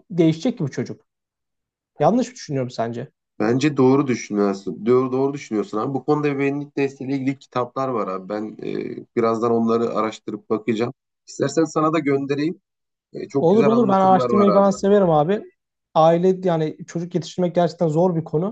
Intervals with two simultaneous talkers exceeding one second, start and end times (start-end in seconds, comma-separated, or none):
13.4-14.7